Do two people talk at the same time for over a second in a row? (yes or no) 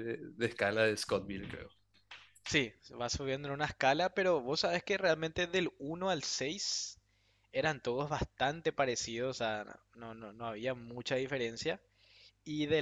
no